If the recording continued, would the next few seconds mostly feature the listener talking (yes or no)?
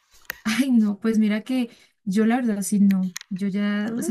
no